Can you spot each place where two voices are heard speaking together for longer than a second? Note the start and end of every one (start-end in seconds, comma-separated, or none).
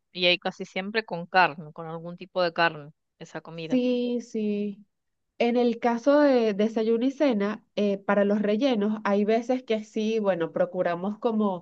none